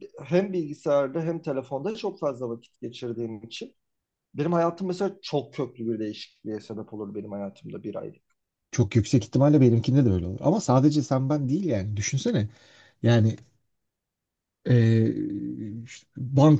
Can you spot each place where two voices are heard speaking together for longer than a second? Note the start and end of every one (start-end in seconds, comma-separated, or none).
none